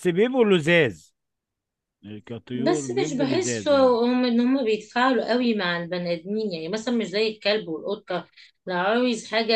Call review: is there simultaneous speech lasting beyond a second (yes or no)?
yes